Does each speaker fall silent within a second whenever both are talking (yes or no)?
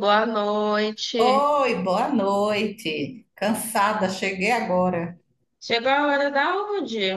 yes